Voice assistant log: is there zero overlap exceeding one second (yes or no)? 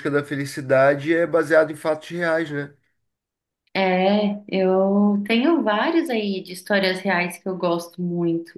yes